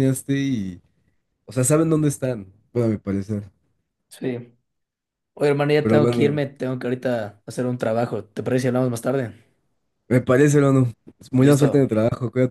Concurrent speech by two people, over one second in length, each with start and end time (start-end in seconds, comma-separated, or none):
none